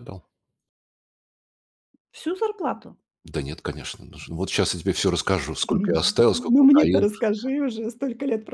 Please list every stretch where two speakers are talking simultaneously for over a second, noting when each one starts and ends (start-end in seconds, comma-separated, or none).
5.7-7.1